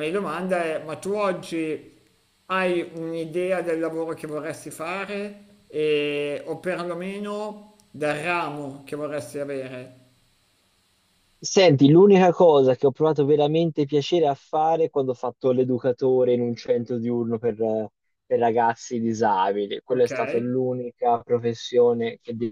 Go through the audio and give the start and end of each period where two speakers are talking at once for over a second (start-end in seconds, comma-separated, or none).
none